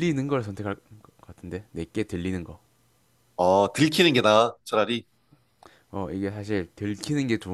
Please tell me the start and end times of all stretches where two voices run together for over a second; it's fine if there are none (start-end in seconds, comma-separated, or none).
none